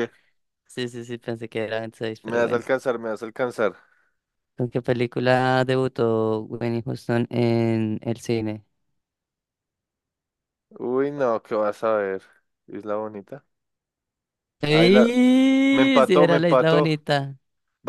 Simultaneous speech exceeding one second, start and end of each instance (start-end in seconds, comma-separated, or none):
15.7-16.9